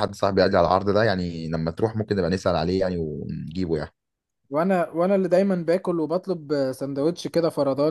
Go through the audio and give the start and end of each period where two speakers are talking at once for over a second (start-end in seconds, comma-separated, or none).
none